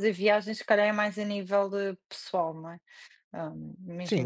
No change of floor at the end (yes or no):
no